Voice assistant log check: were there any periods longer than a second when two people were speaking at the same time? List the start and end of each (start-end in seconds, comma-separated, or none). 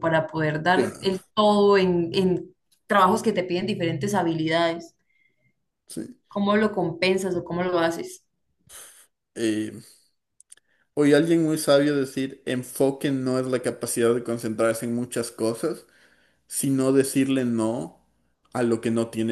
none